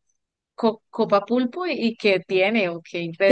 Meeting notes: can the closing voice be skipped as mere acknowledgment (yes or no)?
yes